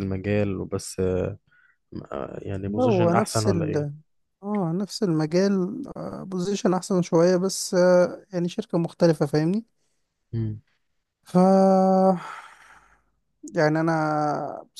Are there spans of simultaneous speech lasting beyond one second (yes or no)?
yes